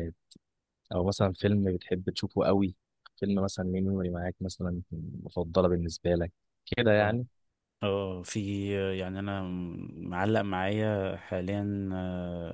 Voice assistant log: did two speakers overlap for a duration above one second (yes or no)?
no